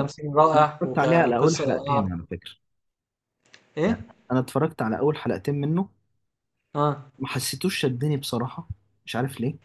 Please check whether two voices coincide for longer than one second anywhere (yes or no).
yes